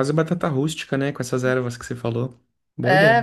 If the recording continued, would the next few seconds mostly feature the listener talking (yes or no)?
yes